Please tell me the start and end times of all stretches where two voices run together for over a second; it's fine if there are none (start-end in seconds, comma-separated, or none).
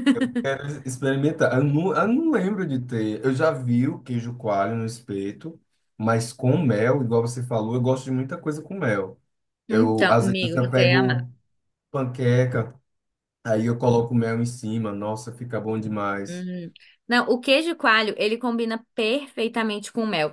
9.7-11.3